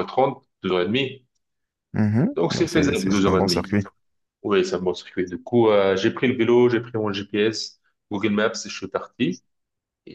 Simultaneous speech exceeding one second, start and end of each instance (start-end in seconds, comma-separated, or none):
2.4-3.8